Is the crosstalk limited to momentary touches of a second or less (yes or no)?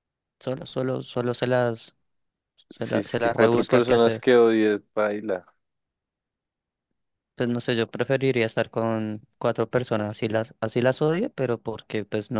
no